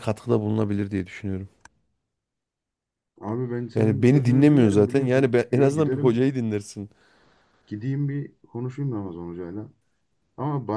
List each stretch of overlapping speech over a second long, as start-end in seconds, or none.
3.7-6.3